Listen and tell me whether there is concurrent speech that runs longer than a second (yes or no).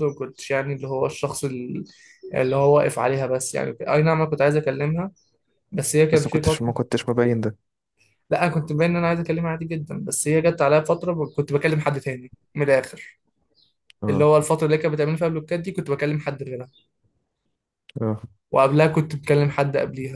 no